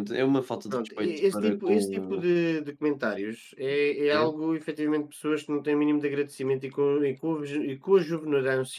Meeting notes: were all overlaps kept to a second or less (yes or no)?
no